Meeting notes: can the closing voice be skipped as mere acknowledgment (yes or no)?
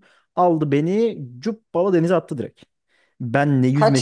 yes